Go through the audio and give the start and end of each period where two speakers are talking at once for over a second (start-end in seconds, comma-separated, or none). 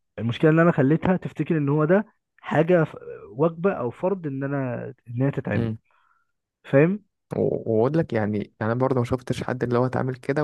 none